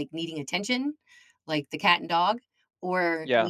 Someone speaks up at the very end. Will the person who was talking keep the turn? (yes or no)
yes